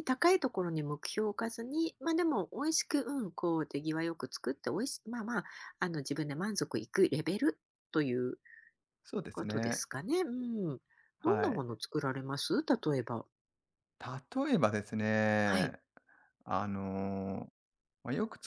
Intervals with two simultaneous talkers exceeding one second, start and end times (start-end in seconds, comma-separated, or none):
none